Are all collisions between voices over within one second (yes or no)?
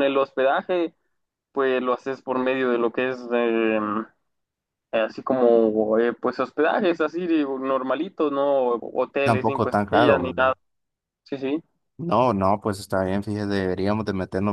no